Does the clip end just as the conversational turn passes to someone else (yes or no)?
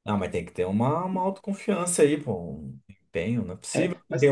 yes